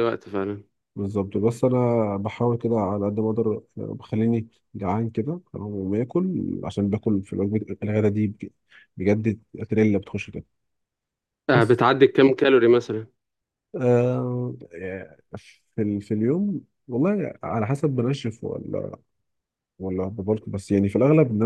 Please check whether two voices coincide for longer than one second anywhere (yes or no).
no